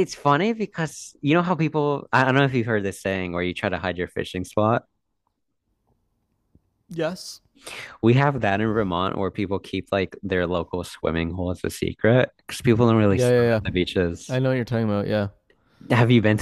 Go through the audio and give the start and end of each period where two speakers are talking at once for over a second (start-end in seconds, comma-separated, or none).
none